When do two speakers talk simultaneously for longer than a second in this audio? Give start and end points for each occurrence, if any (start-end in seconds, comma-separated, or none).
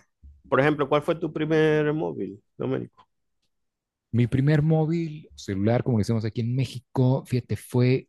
none